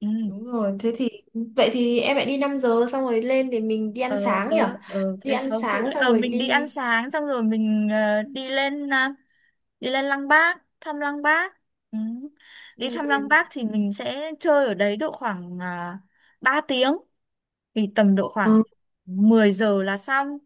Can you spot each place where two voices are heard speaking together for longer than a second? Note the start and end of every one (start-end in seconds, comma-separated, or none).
5.2-6.7